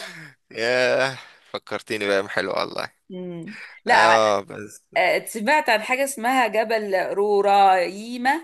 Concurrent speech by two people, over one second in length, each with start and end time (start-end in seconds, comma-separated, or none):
none